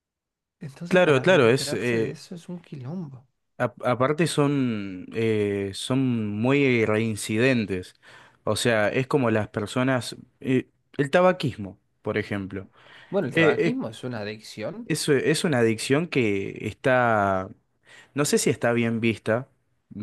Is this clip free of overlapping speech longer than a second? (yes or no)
no